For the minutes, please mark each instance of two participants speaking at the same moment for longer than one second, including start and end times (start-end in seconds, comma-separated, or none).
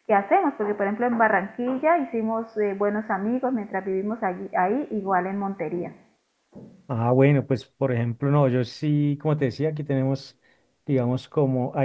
none